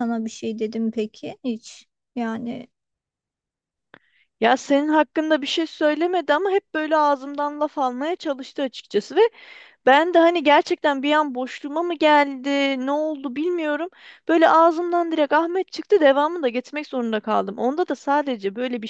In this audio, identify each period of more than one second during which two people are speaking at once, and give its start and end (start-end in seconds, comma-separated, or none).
none